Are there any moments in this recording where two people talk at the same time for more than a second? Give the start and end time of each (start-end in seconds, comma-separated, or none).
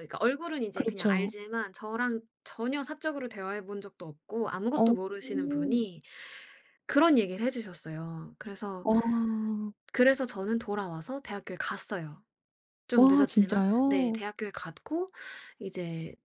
13.0-14.2